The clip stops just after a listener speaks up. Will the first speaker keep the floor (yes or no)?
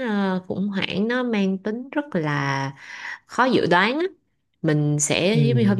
yes